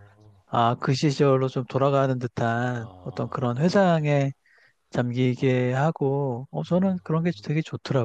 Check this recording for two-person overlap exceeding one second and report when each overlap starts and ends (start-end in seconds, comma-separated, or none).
2.8-4.2